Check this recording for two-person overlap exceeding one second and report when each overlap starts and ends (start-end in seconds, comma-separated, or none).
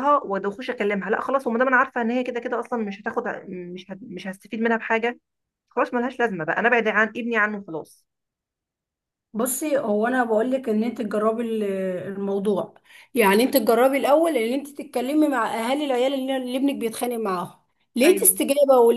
none